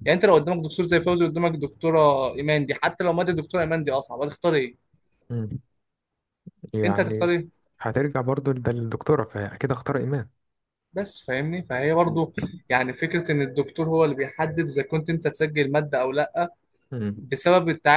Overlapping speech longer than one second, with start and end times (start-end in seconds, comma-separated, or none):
none